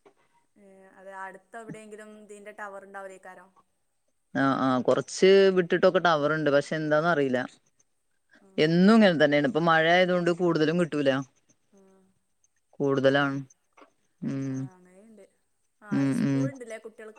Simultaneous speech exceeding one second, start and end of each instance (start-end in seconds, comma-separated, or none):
none